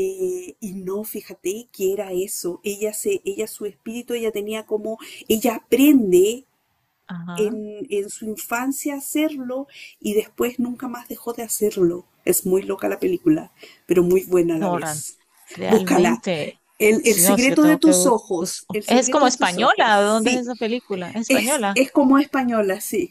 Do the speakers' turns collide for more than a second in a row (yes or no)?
yes